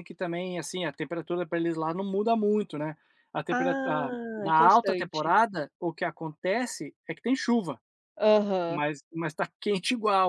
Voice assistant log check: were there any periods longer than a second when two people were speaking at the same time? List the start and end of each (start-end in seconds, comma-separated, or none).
3.5-5.3